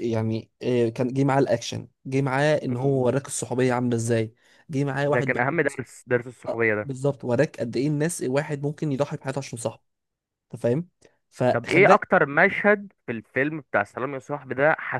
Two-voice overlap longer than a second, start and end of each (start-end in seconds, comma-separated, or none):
none